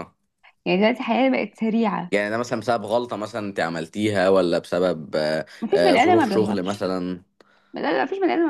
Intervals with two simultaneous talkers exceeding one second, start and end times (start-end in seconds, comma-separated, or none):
5.6-6.9